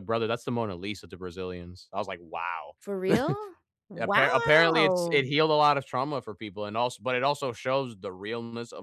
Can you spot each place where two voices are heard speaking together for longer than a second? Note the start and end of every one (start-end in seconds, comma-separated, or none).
4.0-5.2